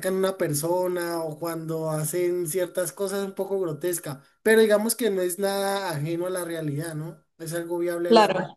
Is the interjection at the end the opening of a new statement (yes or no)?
yes